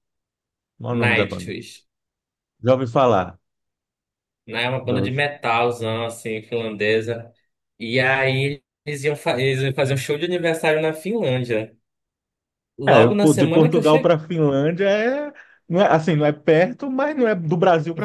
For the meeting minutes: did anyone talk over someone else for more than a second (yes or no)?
yes